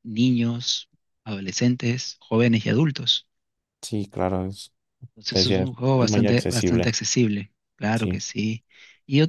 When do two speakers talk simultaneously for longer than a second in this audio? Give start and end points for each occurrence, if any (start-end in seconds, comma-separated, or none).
5.3-7.0